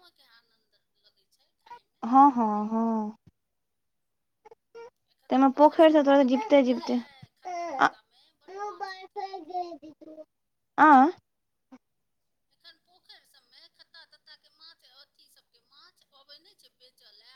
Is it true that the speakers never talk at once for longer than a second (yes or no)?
no